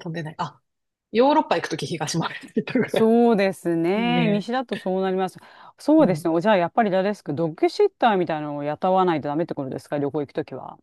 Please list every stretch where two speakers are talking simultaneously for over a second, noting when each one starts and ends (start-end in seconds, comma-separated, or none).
none